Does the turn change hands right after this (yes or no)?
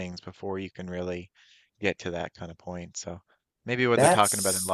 no